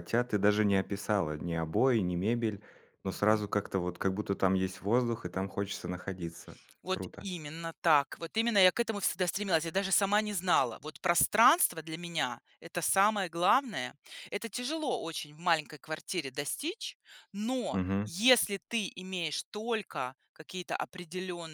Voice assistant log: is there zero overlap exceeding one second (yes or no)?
yes